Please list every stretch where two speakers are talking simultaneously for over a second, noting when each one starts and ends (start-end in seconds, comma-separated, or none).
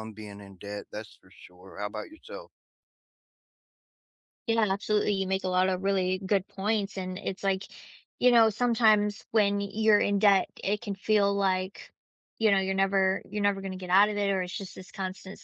none